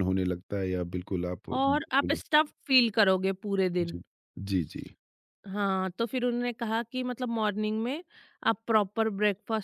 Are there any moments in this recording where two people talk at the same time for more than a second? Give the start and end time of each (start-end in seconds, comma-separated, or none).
none